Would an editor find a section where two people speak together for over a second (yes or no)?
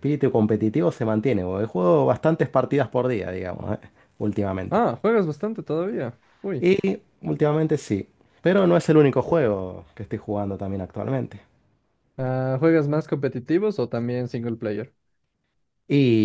no